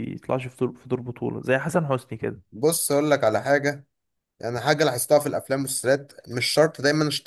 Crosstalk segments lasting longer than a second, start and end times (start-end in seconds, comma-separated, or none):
none